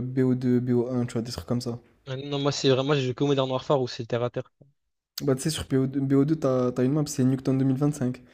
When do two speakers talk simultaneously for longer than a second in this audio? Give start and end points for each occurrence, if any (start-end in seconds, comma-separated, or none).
none